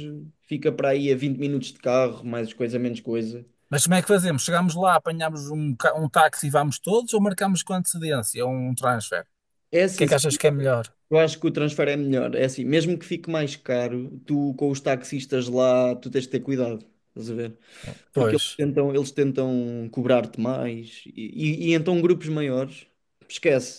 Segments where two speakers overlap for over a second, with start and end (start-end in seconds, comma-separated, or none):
none